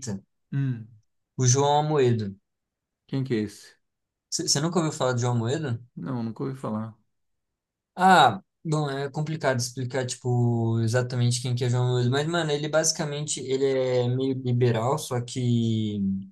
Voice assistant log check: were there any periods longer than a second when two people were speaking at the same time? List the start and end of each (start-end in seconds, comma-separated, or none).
none